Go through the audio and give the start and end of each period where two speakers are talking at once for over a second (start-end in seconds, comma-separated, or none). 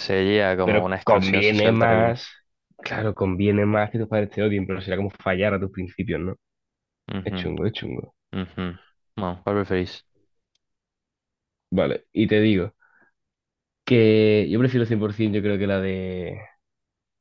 0.6-2.2